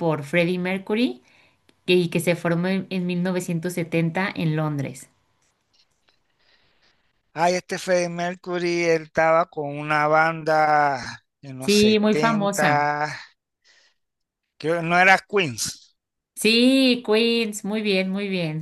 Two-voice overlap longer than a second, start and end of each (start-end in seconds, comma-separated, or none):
11.6-12.9